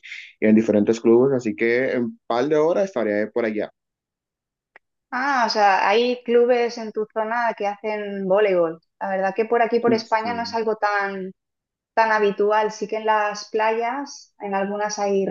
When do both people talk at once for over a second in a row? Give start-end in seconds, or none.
none